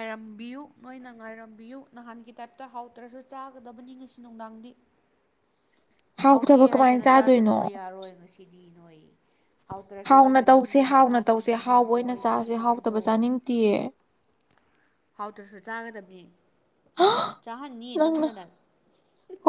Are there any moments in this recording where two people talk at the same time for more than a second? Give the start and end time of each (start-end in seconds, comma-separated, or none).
6.3-7.6, 10.1-13.0